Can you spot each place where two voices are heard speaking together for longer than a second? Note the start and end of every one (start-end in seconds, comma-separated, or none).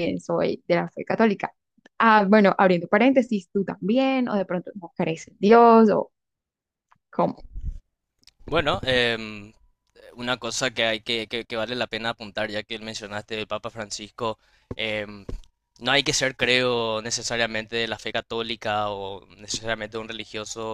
none